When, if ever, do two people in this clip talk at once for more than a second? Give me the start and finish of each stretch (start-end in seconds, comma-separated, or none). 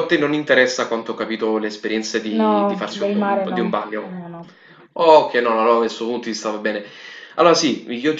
2.4-4.1